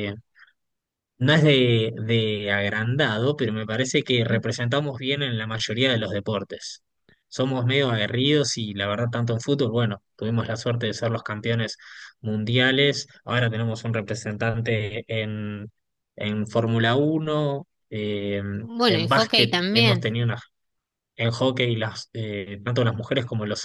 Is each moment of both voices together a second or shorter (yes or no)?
no